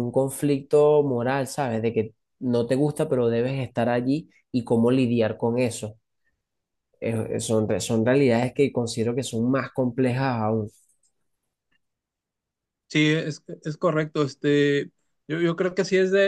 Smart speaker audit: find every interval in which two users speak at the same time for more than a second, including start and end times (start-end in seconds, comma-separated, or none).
none